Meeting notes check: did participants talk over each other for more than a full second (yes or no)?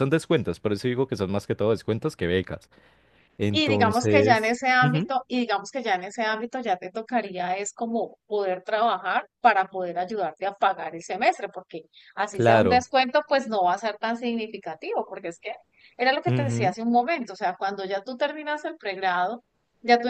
yes